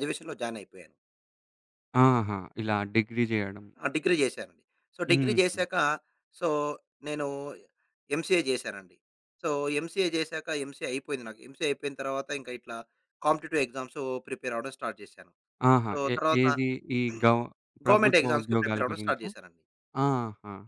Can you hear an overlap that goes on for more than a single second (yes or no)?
yes